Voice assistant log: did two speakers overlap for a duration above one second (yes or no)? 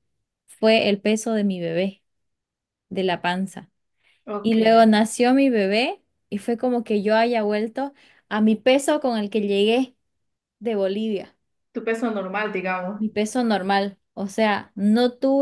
no